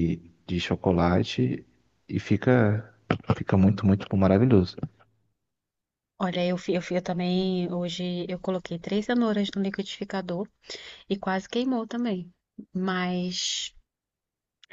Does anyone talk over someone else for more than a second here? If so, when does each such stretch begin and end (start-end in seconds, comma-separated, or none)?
none